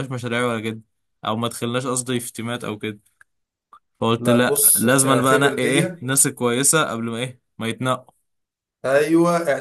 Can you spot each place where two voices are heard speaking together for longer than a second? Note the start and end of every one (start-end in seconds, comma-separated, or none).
4.2-6.0